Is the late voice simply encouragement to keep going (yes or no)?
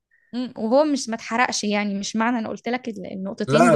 no